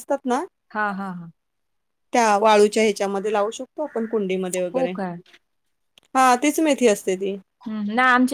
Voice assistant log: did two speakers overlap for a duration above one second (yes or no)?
no